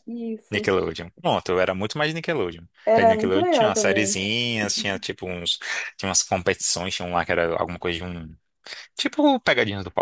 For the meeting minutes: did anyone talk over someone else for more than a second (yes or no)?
yes